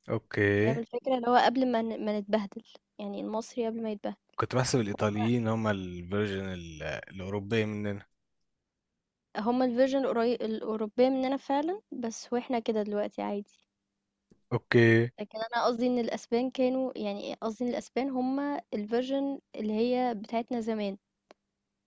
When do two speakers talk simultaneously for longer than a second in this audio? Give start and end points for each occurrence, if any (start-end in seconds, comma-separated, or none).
none